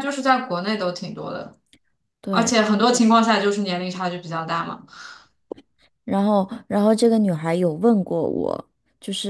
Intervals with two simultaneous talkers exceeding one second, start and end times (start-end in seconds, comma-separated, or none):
none